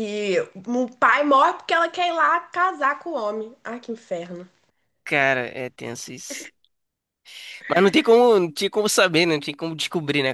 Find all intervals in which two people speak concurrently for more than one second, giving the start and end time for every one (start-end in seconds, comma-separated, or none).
none